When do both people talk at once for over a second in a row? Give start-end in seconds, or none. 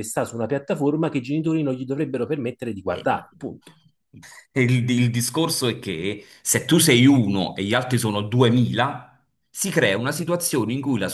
none